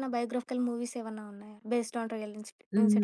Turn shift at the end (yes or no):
yes